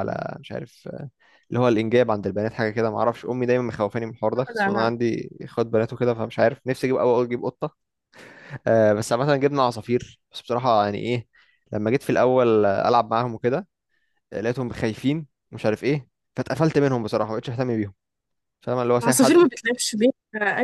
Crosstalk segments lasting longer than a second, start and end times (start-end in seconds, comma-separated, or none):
none